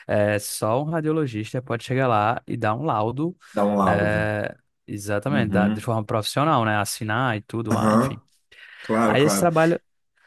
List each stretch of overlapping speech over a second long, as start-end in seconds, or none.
none